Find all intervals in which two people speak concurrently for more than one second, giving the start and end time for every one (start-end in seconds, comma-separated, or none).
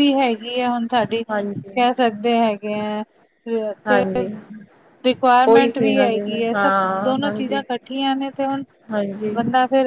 5.5-7.6